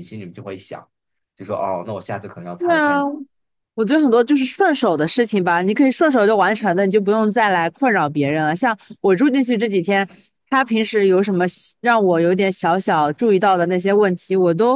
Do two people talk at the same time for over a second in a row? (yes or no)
no